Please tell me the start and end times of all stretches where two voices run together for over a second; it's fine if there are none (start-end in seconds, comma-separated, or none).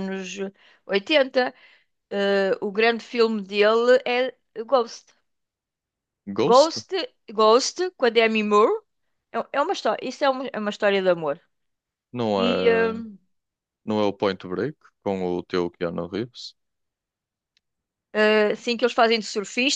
none